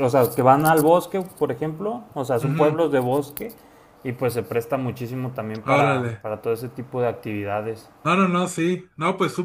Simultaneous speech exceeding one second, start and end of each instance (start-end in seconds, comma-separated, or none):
none